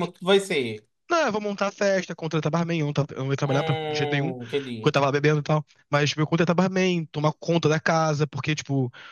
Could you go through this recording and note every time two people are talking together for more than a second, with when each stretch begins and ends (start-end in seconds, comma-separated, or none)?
3.5-5.0